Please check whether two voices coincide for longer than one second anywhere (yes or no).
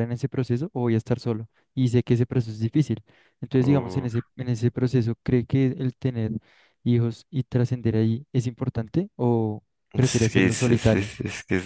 yes